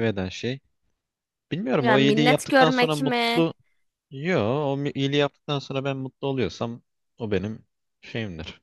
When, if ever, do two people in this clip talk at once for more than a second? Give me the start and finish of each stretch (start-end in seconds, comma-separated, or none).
1.8-3.4